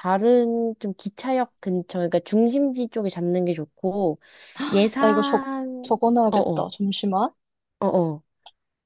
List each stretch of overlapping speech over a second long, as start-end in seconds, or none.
5.0-6.7